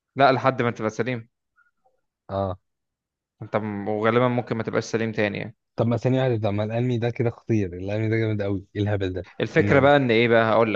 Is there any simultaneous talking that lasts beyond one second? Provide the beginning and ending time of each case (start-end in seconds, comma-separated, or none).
none